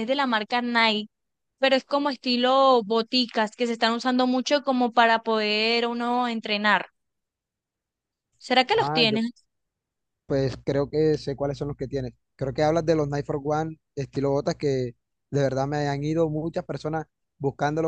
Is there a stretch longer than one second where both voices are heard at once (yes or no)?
no